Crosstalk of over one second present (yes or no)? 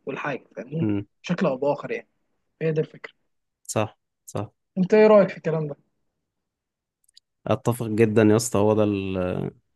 no